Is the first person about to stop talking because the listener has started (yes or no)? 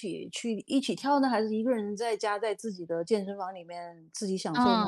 yes